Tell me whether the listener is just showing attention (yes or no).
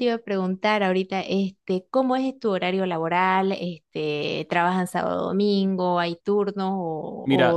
no